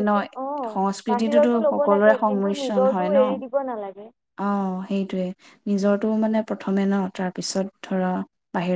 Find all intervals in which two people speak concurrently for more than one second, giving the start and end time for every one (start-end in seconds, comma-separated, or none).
1.1-4.0